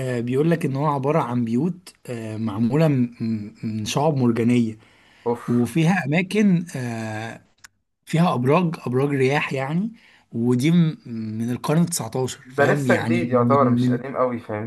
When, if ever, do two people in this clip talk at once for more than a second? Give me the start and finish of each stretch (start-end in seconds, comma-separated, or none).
12.4-14.0